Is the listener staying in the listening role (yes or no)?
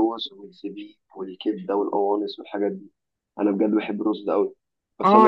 yes